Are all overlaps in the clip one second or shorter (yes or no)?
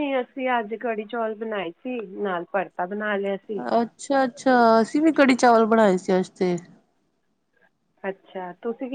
yes